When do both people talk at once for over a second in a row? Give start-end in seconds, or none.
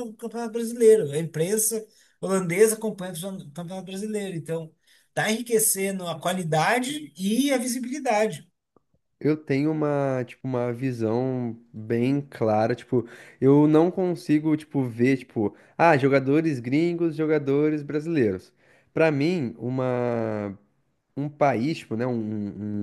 none